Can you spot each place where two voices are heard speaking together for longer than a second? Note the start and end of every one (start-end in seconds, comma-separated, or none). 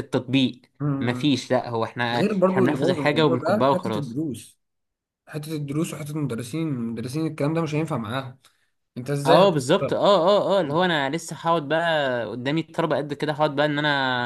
2.1-4.2